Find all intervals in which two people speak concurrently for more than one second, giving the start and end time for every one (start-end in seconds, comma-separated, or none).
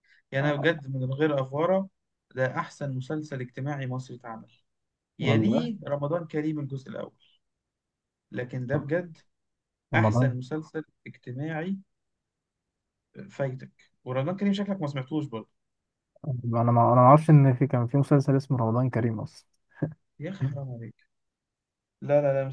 none